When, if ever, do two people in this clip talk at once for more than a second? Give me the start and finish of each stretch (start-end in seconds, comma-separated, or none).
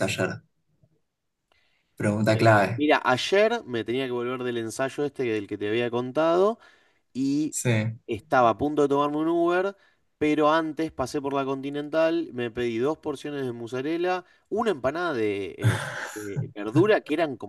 none